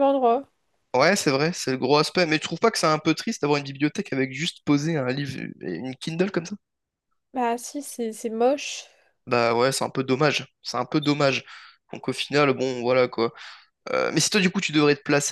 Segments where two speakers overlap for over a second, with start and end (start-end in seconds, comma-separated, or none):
none